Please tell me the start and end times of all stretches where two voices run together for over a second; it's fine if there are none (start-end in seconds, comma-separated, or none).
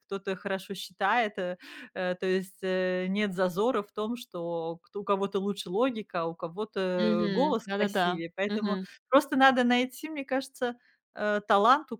7.0-8.8